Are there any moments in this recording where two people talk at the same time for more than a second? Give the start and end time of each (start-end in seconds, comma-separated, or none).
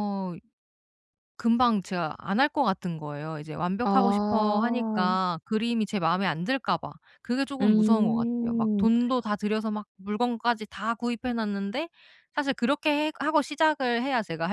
3.8-5.2, 7.6-8.9